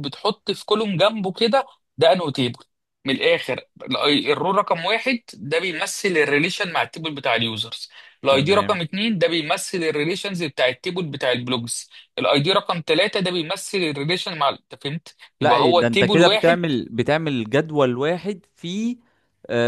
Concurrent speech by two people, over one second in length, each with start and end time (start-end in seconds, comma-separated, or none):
15.4-16.6